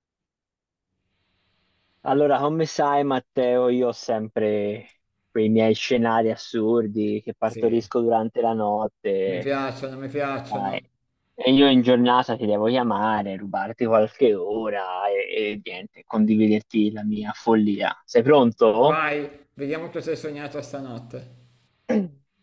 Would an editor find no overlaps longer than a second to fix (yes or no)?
yes